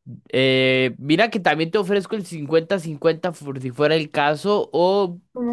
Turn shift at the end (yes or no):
no